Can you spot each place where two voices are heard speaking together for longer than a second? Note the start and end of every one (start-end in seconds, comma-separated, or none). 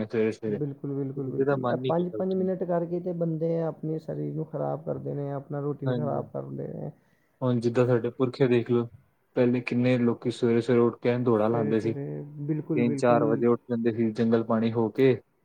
11.5-13.4